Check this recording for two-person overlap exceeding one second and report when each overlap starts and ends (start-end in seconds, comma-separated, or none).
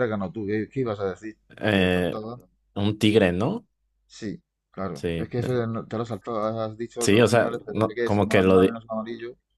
7.0-8.8